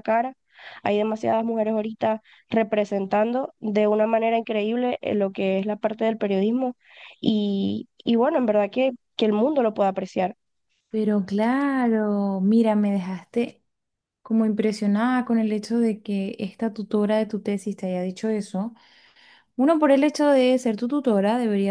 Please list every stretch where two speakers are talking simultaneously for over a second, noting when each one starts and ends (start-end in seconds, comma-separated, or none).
none